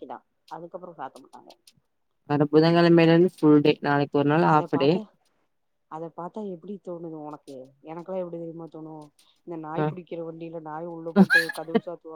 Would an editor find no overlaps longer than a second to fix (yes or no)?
yes